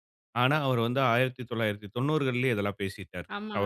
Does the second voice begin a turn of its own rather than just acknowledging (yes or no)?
yes